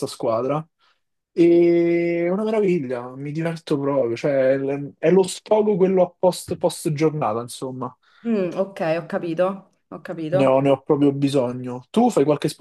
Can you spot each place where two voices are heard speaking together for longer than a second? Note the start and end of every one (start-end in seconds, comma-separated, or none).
none